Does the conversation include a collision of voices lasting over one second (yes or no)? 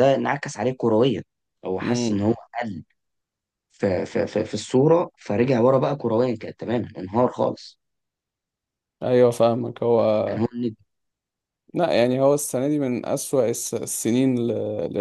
no